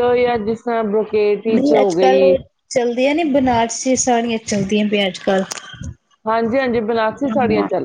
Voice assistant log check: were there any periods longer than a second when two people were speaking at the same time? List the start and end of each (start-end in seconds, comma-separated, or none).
none